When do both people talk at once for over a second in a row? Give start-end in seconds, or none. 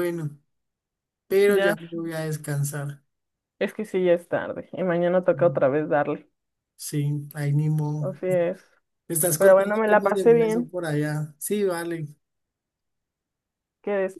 9.4-10.7